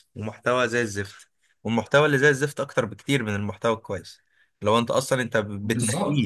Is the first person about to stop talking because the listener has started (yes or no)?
no